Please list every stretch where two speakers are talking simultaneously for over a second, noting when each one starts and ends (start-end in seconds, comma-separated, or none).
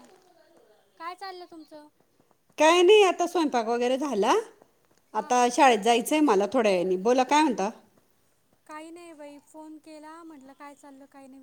none